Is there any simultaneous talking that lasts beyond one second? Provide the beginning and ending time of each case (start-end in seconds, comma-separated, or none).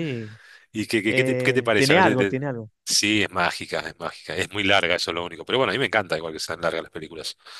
1.1-2.4